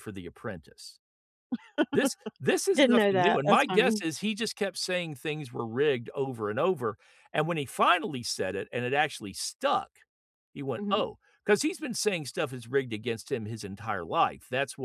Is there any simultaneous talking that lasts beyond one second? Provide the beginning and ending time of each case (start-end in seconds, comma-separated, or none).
2.7-4.0